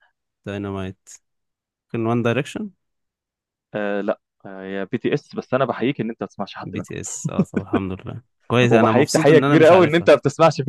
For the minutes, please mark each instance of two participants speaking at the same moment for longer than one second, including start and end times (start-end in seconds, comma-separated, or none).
8.7-10.1